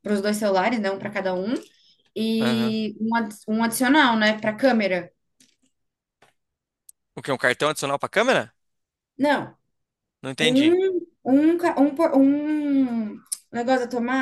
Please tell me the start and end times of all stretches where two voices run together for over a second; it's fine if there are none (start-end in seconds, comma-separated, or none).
none